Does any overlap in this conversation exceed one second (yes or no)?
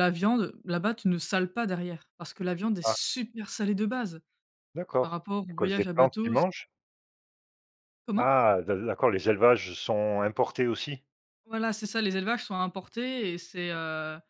yes